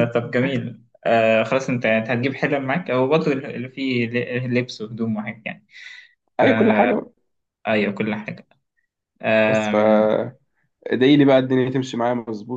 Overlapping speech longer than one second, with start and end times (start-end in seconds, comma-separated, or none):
none